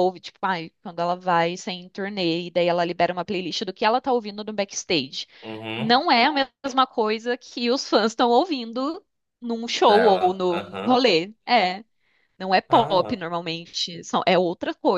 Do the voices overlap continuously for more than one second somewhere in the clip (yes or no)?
yes